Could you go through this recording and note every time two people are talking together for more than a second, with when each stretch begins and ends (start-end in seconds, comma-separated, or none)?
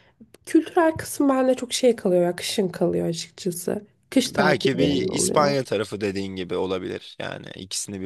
4.3-5.6